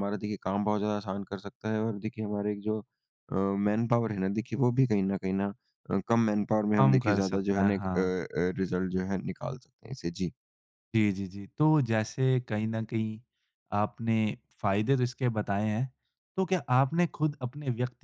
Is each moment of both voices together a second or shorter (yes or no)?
no